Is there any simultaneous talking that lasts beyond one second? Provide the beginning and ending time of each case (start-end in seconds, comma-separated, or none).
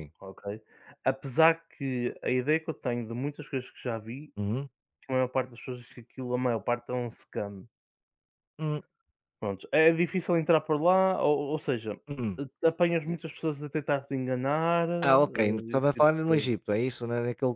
15.0-16.5